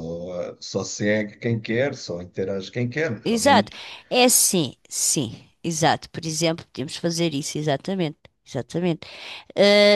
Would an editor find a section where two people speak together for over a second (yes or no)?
no